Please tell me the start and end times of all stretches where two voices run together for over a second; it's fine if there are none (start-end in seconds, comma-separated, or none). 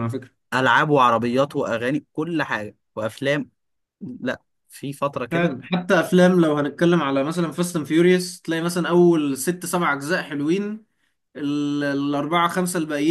none